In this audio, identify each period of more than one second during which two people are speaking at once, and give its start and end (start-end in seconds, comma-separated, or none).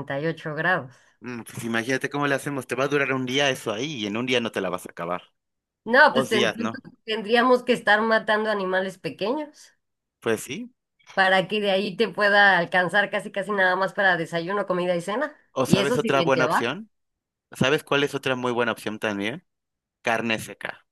15.5-16.8